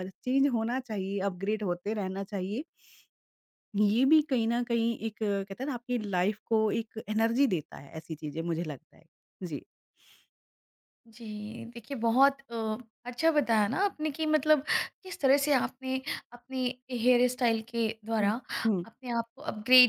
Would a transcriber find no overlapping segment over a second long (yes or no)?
yes